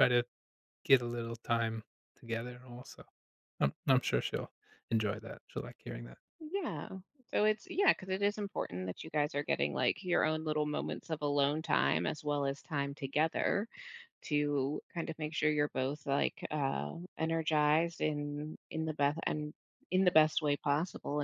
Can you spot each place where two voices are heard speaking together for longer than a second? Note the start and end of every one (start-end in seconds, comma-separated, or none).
none